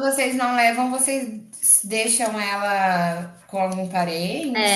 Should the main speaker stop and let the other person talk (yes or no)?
yes